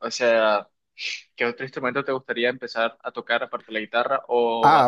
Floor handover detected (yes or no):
no